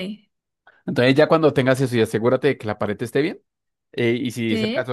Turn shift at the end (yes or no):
no